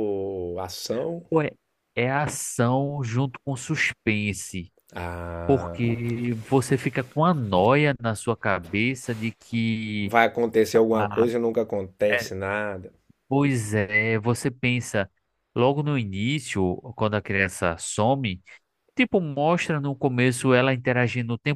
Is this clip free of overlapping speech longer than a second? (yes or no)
yes